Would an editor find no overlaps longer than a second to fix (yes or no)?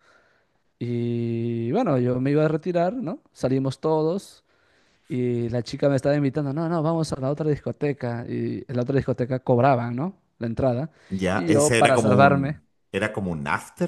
no